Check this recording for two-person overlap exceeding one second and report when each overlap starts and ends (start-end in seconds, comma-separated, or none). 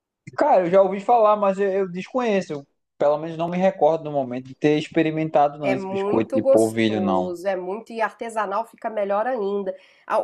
5.6-7.3